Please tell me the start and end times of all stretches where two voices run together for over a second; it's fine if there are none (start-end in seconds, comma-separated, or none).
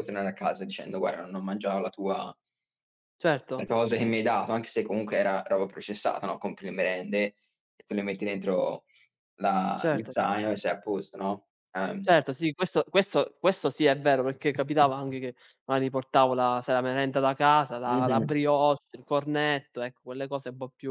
none